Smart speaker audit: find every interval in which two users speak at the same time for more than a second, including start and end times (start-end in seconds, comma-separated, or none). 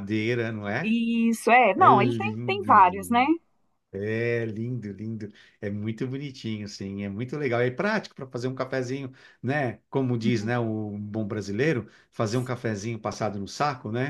1.8-3.2